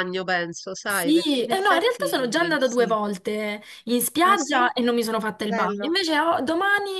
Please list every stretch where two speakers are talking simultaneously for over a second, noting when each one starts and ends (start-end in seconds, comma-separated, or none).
0.8-3.0